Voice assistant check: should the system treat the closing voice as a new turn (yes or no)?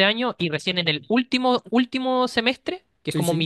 no